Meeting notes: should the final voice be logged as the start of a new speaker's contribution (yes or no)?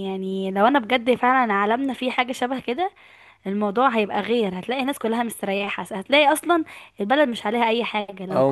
yes